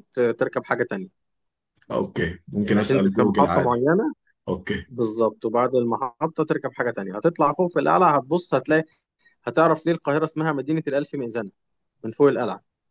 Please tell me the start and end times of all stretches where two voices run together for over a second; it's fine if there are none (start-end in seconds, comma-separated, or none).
2.6-3.8